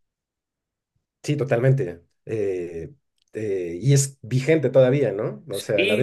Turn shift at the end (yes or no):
yes